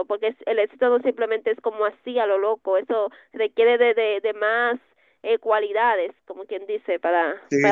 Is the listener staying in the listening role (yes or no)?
no